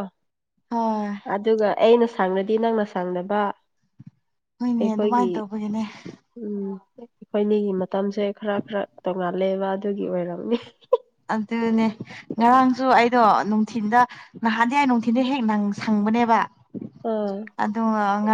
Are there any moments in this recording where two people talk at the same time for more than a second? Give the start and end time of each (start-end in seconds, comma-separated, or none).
none